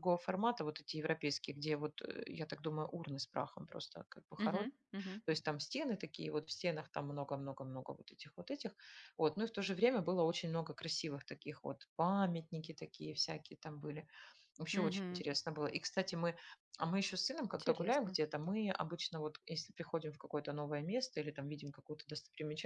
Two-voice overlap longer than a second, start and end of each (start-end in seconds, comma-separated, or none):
none